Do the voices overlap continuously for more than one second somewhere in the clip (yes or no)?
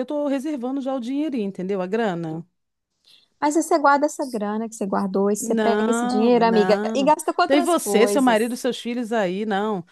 yes